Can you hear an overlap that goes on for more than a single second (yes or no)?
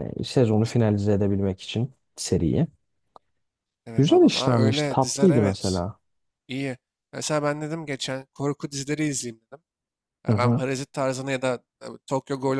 yes